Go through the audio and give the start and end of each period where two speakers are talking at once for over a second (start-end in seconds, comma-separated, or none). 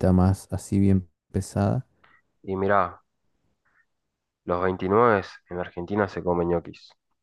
none